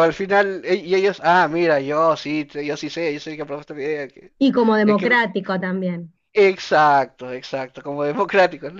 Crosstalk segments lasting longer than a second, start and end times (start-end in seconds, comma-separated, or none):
none